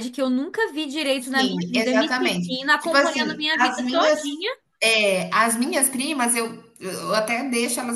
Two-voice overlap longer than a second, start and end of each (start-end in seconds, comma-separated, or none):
1.3-4.2